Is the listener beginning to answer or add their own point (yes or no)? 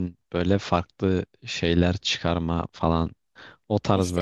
no